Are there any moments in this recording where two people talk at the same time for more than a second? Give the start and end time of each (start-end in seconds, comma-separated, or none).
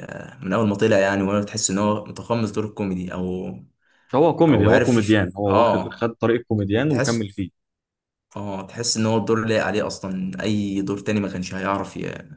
4.5-6.1